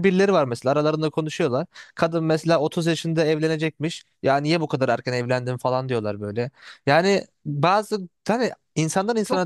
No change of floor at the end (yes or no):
no